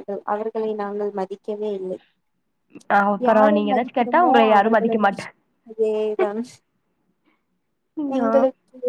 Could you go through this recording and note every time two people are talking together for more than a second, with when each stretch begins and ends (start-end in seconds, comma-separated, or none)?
3.3-5.3